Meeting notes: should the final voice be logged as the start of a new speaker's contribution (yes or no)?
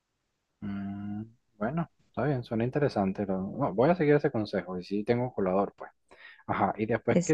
no